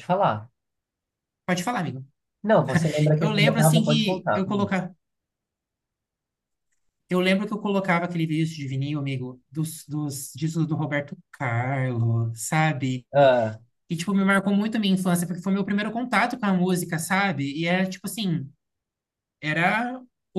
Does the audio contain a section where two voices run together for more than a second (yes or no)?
yes